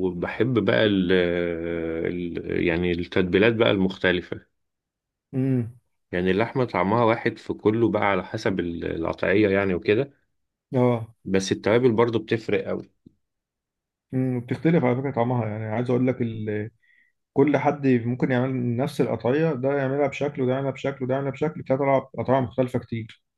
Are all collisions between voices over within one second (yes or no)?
yes